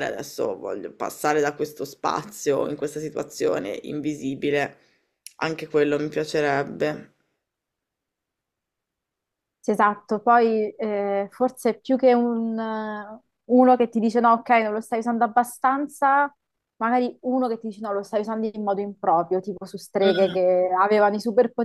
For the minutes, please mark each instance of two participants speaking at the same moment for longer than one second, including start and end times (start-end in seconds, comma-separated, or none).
none